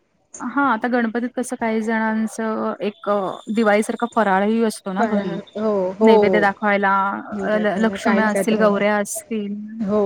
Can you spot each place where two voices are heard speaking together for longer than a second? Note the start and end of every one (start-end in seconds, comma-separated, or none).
7.8-9.0